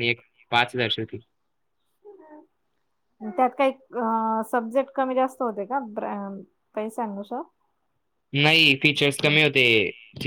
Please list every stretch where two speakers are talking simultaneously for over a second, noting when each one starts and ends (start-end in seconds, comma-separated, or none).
none